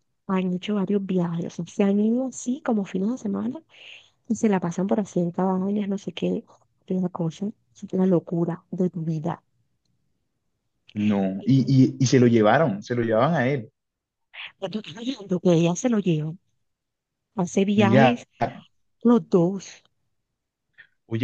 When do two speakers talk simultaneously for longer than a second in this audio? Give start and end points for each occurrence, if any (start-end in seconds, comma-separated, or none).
none